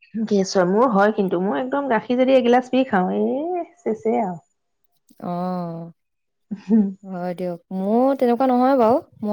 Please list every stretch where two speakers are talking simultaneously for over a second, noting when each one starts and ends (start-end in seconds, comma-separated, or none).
none